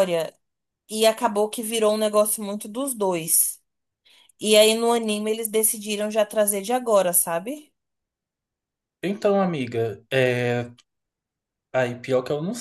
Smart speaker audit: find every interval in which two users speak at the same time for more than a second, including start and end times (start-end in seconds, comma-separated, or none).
none